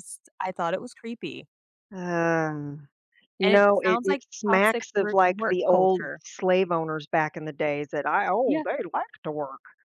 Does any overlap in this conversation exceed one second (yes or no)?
yes